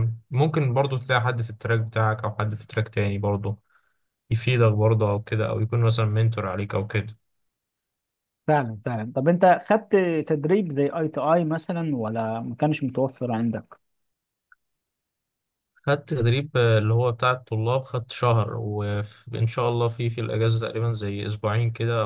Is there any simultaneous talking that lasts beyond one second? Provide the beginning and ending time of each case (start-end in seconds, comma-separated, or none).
none